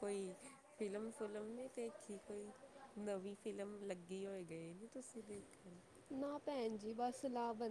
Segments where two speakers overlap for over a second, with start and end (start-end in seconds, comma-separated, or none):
none